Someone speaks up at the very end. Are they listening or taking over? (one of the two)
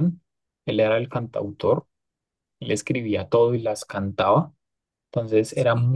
listening